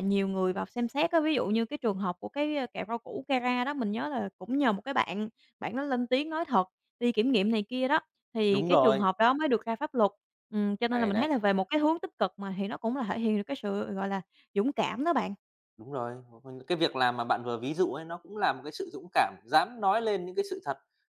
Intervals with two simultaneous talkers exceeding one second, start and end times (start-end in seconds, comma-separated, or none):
none